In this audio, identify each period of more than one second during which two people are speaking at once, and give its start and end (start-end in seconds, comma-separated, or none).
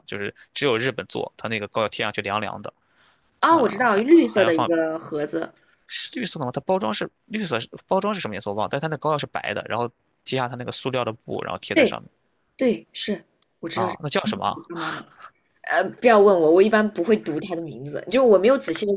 3.5-4.7